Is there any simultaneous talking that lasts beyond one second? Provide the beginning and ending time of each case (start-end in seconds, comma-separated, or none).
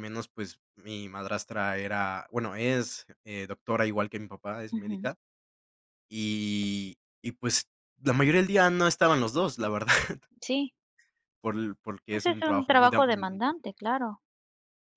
12.1-13.5